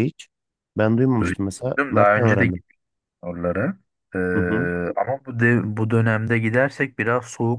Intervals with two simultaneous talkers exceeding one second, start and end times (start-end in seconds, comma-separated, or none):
1.2-2.5